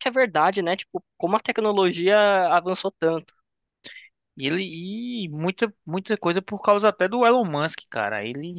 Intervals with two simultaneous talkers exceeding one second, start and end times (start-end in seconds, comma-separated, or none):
none